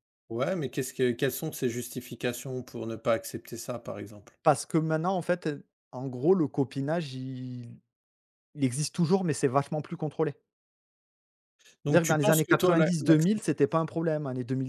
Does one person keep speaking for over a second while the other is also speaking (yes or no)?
yes